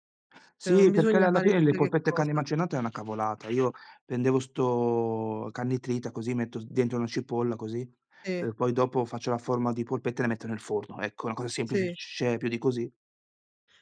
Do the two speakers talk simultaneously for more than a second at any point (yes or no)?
yes